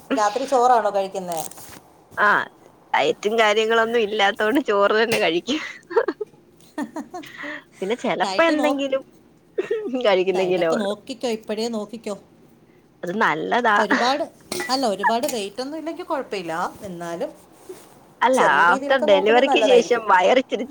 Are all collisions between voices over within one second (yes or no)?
no